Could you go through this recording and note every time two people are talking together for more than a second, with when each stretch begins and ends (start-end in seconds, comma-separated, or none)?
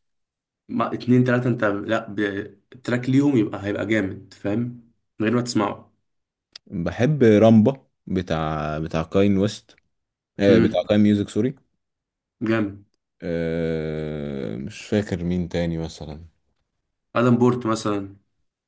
none